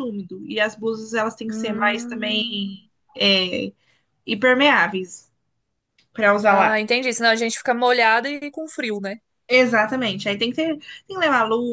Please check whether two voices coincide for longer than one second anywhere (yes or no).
yes